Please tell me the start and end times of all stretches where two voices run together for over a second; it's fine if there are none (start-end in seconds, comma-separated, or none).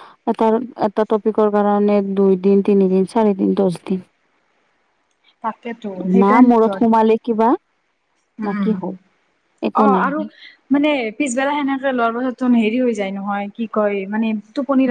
none